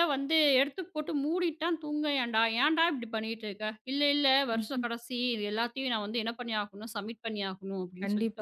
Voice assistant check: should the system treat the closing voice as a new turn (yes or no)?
yes